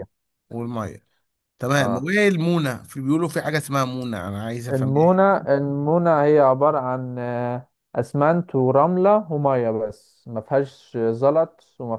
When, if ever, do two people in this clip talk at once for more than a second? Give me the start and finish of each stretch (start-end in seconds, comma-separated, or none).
none